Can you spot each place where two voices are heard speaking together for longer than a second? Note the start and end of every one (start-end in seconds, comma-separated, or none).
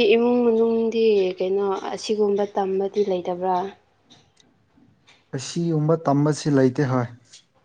none